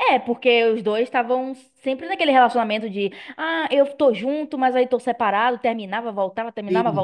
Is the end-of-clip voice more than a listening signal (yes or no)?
yes